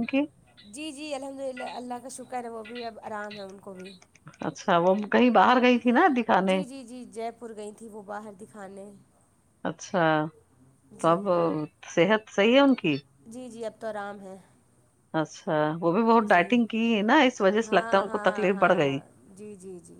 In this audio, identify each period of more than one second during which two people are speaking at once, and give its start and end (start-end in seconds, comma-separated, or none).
17.6-19.0